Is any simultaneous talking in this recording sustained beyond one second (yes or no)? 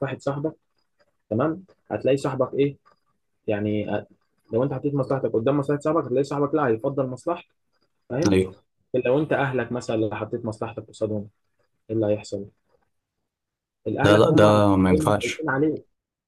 yes